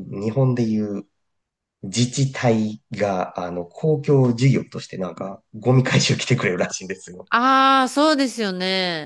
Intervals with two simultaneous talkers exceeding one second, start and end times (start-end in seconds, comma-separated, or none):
none